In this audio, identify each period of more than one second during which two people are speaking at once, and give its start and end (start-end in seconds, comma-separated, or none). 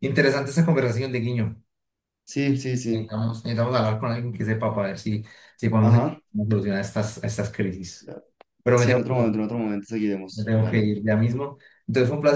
none